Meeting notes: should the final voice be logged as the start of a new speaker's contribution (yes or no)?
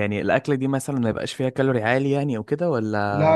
yes